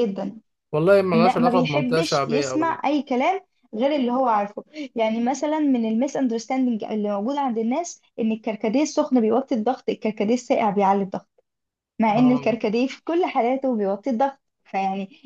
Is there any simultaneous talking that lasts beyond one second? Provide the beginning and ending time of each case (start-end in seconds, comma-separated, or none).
1.1-2.8